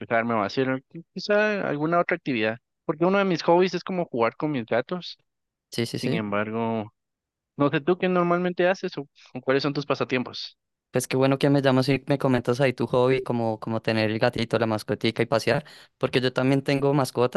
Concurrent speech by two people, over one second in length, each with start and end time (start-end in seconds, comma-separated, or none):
none